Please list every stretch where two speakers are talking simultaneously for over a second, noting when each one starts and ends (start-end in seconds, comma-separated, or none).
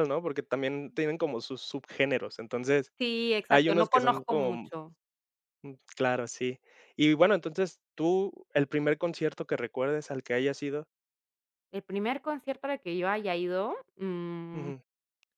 3.5-4.7